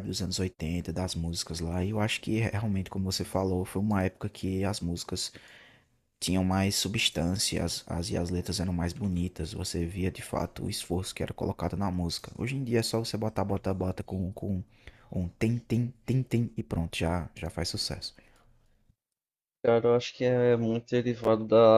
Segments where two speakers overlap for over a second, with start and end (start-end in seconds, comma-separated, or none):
none